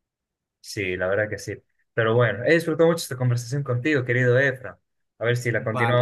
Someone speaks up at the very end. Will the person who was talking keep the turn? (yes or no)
yes